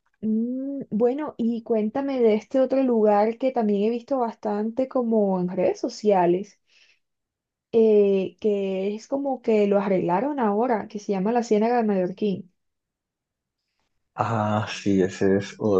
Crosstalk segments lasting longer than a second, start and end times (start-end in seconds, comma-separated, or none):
none